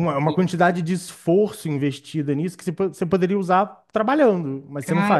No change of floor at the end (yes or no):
no